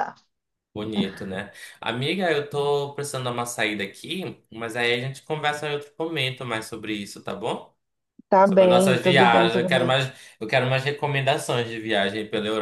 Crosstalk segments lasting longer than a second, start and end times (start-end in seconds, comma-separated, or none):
8.4-10.0